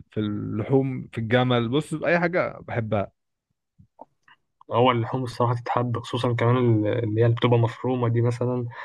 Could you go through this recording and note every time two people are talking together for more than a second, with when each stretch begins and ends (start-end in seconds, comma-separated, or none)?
none